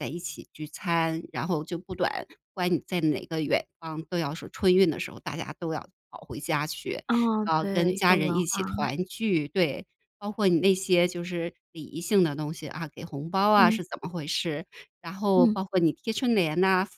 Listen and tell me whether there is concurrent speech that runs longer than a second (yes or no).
yes